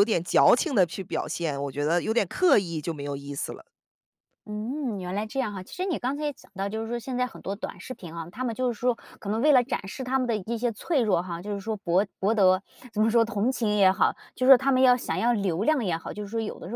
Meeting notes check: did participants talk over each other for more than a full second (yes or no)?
no